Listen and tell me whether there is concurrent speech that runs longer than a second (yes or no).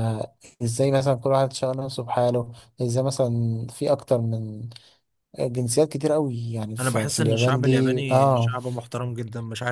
yes